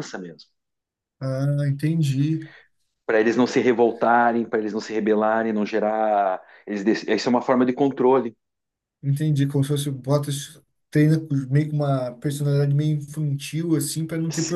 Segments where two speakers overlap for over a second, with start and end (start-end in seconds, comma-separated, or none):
none